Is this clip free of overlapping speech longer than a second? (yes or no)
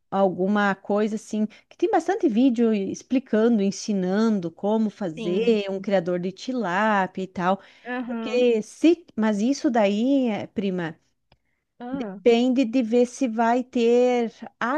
yes